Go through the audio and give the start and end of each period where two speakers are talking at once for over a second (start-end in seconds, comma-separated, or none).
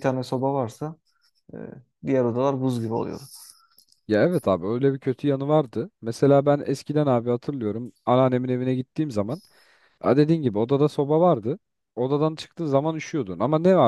none